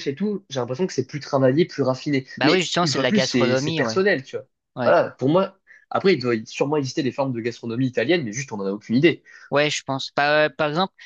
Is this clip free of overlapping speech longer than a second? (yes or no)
no